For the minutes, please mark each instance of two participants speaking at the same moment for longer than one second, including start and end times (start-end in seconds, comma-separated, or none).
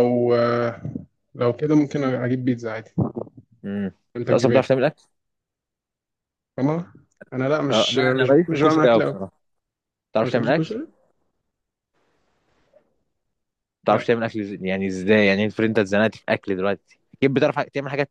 7.7-9.2